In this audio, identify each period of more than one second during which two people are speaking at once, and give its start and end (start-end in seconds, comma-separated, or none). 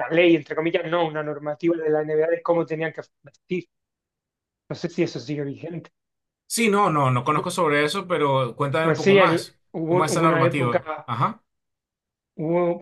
8.8-11.1